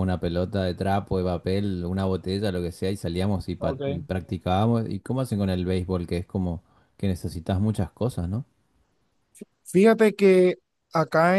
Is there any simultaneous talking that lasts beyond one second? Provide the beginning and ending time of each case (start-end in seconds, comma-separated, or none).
none